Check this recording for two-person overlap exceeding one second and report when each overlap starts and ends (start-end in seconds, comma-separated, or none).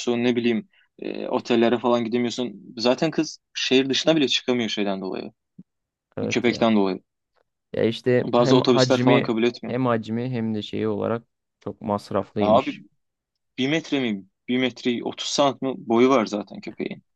8.2-9.8